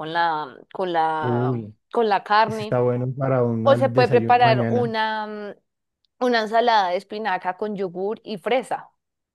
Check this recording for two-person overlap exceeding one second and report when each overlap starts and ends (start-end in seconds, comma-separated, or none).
3.6-4.9